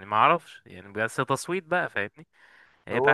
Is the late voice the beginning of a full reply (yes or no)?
yes